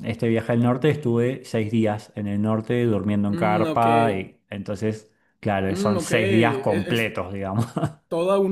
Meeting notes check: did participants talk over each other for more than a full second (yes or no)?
yes